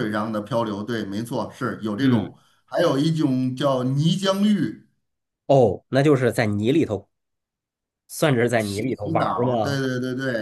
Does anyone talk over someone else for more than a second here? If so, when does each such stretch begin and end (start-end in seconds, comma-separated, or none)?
8.6-9.8